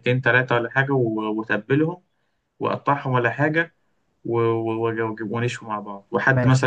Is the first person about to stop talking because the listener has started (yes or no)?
no